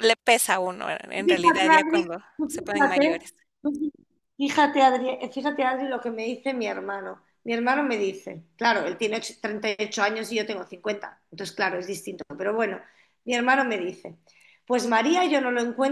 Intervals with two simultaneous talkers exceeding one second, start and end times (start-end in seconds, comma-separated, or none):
1.1-3.2